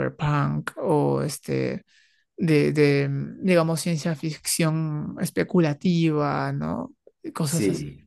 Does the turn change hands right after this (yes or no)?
yes